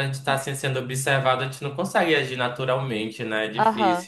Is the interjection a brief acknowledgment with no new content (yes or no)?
no